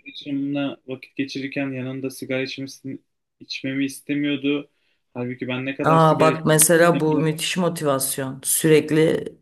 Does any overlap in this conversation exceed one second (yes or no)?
yes